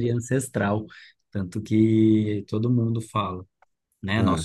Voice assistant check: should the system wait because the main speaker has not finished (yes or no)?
yes